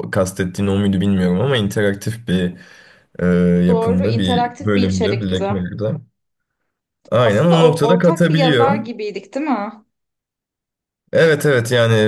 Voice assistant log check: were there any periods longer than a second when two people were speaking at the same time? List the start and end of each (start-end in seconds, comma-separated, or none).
3.7-5.5, 7.2-8.8